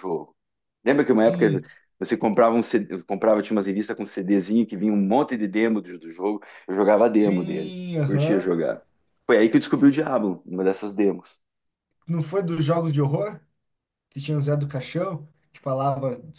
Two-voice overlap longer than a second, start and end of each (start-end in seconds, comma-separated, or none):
7.1-8.5